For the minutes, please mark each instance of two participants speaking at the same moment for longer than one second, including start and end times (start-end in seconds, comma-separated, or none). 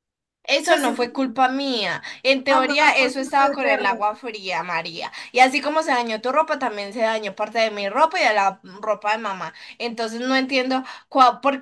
2.5-3.9